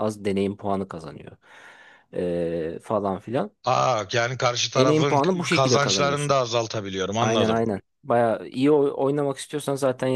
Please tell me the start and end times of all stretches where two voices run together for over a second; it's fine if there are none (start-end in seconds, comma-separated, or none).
4.8-6.4